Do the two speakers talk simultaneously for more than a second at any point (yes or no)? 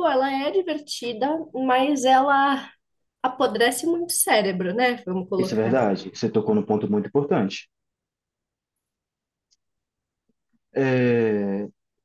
no